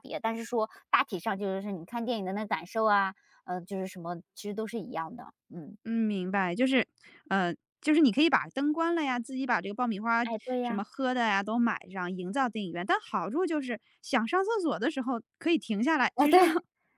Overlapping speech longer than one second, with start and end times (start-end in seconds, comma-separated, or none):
none